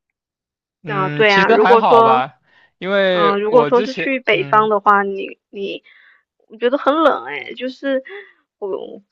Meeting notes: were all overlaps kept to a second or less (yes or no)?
no